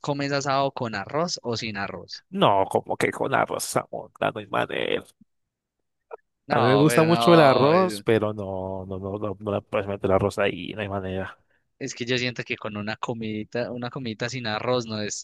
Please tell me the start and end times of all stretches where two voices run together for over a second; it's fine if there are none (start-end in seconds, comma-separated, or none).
6.5-8.0